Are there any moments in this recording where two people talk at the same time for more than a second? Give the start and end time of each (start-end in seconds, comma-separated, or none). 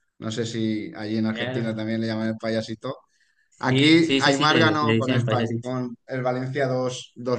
3.6-5.8